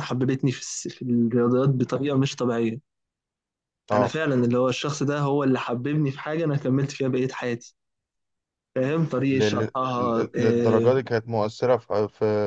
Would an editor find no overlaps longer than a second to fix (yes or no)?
no